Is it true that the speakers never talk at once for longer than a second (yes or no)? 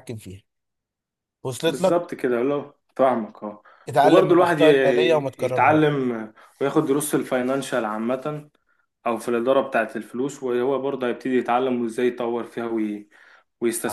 no